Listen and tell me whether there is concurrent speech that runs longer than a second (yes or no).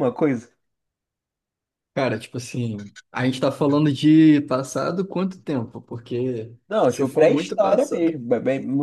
yes